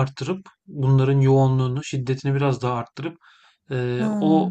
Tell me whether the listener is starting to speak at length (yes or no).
no